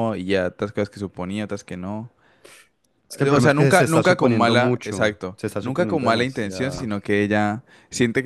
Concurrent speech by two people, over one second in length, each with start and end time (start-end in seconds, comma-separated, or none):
3.2-6.9